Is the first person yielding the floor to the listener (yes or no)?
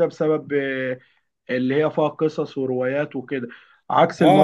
yes